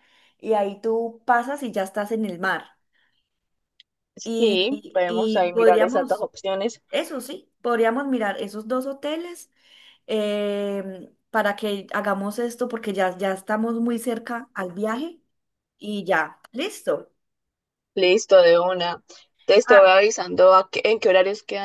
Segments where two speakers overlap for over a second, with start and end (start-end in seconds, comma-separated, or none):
4.4-6.2